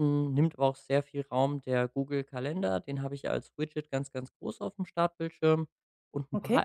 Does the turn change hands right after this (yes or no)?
no